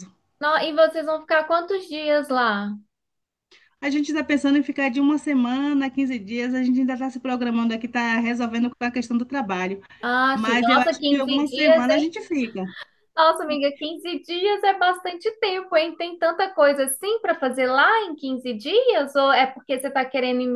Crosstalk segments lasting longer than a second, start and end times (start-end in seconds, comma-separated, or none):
10.3-11.8